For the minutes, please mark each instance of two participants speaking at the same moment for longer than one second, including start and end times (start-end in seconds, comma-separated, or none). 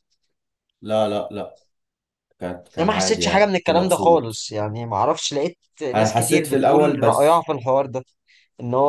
2.8-4.5, 5.9-7.5